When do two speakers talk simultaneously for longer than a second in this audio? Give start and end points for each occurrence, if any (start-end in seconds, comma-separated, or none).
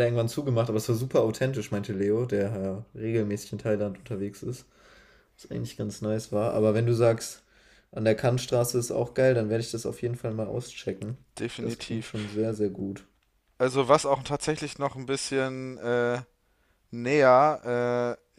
none